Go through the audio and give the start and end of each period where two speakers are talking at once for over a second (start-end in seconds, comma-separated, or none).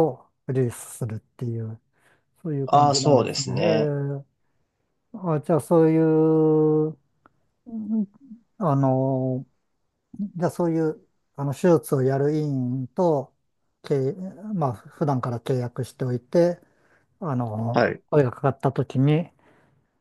2.7-3.9